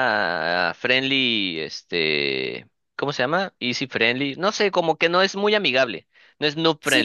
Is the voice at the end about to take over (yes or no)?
yes